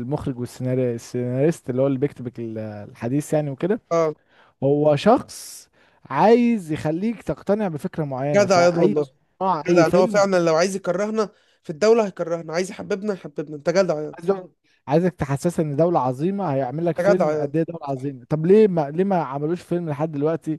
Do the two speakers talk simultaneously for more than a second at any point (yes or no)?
no